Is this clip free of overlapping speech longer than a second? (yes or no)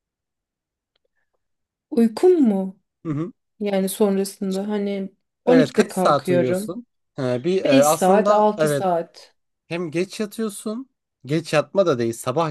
no